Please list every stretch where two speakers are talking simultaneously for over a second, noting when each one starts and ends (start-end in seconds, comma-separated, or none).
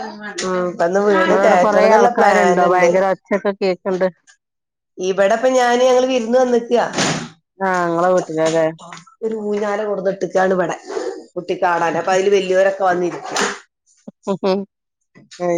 1.3-2.9